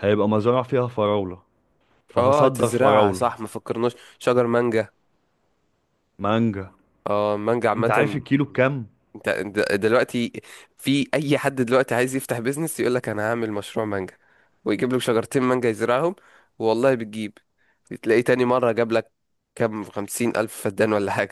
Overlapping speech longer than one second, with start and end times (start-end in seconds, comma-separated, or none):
2.2-3.4